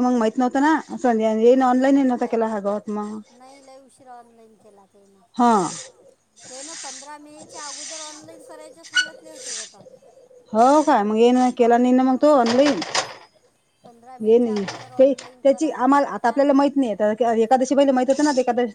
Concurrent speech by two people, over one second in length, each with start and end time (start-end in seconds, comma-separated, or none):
14.2-16.4